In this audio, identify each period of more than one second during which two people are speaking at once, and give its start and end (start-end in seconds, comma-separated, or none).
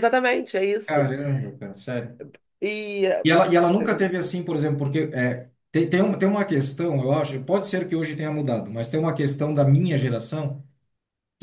none